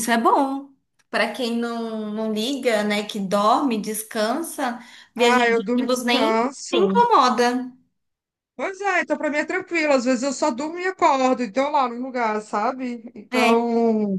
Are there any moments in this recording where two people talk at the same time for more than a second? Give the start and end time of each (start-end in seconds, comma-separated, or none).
5.2-7.0